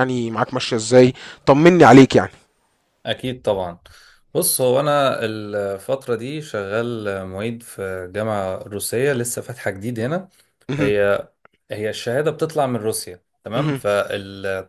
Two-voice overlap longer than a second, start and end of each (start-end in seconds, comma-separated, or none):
none